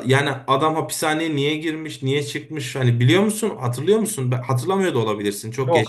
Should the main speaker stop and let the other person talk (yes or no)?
yes